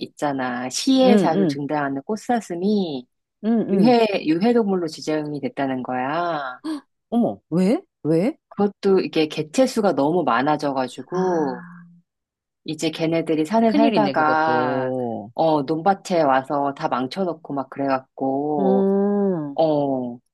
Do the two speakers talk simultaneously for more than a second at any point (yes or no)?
yes